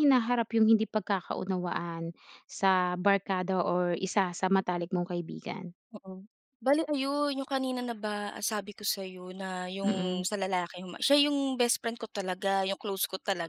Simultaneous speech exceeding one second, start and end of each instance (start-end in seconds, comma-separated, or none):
none